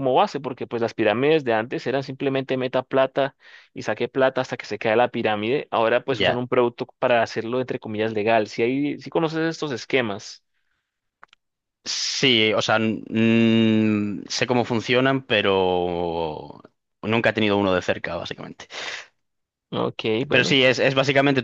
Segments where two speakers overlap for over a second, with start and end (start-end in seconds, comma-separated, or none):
none